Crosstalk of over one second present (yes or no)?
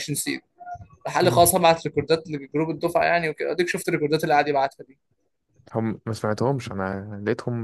no